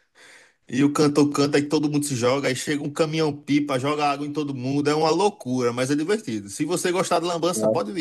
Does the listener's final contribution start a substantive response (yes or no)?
no